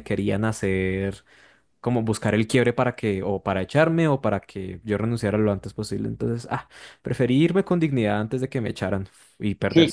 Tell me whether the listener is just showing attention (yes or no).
no